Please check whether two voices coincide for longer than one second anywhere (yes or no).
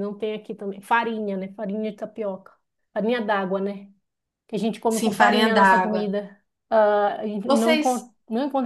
yes